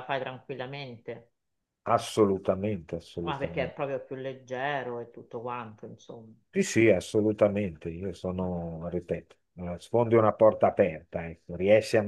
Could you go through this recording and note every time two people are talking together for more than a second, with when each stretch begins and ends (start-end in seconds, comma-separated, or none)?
none